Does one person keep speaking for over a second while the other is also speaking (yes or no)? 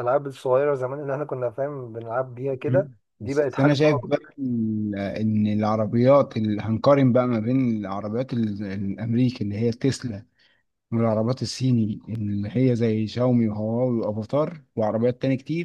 yes